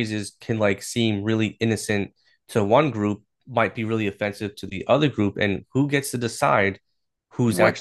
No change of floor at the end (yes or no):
yes